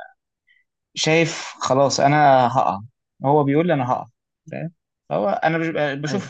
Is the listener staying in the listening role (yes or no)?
yes